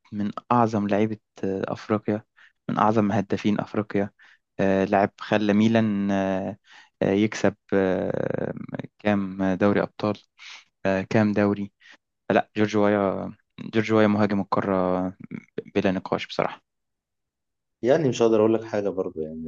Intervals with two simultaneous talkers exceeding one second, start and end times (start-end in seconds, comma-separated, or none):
none